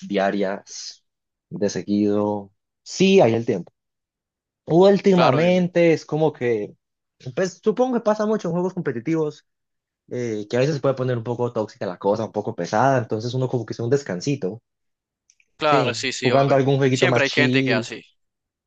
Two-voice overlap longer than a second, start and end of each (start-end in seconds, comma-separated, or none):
15.6-17.9